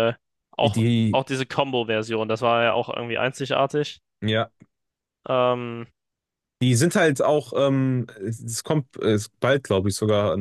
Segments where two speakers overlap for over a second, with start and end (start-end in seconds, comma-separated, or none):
none